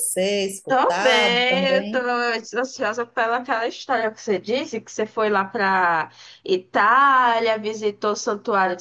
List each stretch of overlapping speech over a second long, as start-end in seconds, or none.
0.7-2.0